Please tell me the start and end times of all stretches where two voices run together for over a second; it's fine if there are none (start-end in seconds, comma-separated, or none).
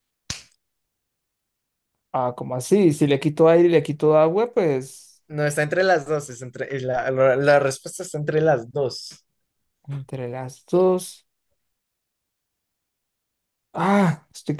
none